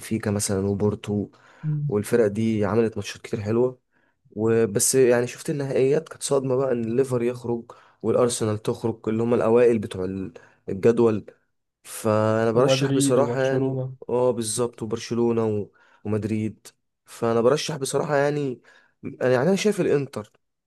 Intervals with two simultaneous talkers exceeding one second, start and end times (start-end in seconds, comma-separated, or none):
12.5-13.9